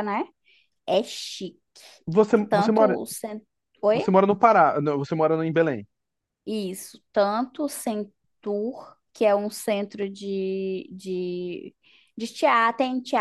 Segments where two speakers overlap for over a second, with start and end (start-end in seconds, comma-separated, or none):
none